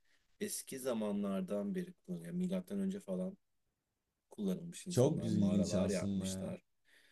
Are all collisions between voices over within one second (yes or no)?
no